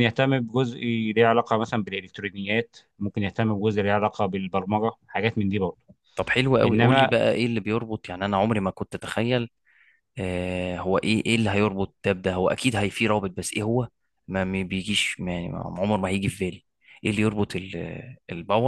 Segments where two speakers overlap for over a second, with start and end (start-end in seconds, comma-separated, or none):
none